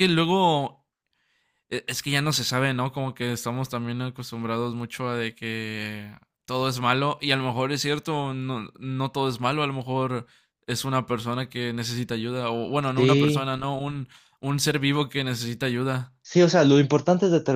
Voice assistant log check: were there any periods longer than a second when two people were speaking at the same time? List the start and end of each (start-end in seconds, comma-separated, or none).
none